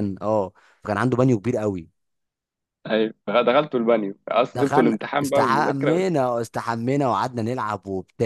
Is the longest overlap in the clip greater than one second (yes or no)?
yes